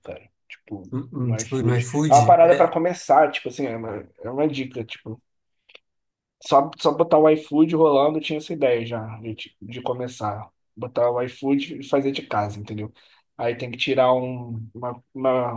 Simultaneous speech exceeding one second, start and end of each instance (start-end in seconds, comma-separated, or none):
0.9-2.7